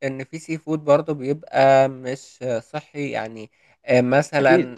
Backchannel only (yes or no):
yes